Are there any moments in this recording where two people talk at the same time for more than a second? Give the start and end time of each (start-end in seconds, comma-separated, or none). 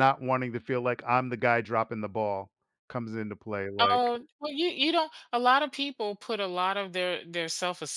none